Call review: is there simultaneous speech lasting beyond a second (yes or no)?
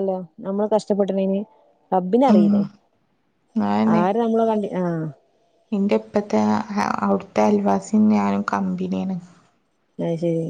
no